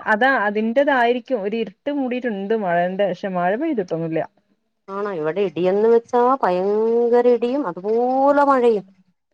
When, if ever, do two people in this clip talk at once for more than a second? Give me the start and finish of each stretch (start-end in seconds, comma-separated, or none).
none